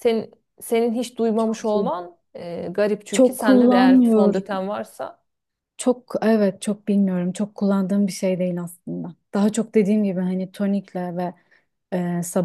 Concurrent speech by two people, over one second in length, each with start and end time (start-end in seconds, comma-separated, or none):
3.1-4.6